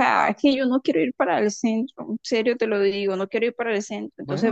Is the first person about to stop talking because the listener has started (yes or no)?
no